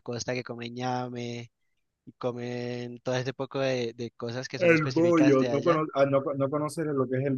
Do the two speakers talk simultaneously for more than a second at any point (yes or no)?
yes